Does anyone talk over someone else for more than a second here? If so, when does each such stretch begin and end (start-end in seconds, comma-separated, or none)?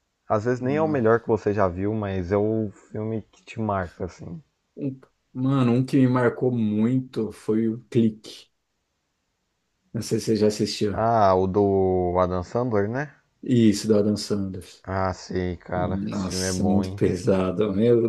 15.7-17.0